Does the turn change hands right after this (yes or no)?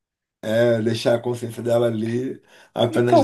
yes